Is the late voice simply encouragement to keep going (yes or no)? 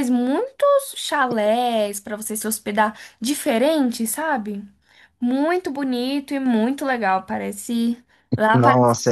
no